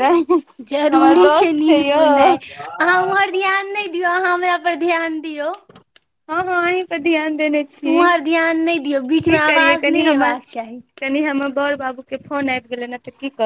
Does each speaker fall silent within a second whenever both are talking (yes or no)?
no